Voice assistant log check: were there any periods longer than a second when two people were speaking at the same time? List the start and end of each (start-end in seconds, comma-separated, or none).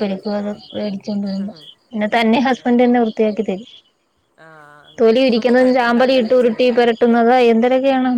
none